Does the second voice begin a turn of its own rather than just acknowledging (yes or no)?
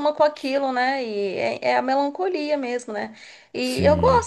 no